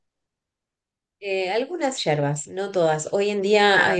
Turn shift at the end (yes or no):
no